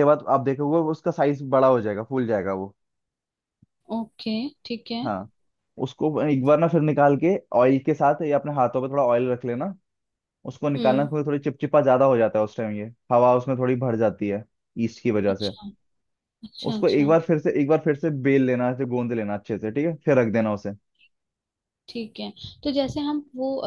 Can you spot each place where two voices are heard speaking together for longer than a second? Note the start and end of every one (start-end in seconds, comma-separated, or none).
none